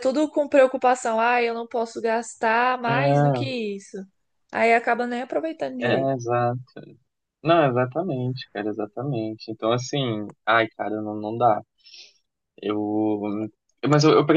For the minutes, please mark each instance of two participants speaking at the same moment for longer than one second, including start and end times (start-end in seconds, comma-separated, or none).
none